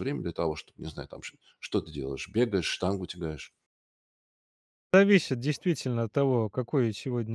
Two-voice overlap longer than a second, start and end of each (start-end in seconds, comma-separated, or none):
none